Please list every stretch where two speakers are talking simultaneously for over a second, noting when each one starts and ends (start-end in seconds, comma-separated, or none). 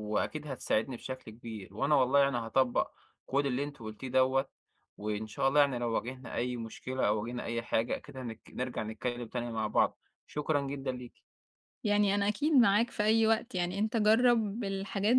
none